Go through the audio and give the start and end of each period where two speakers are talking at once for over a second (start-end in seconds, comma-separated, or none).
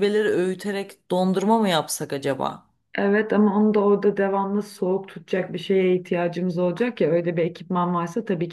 none